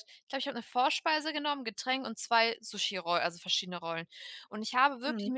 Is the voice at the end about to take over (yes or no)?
no